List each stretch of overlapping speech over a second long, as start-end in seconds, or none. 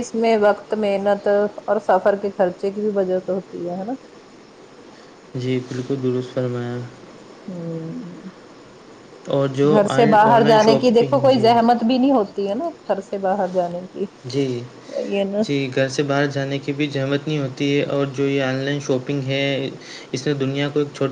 9.7-11.5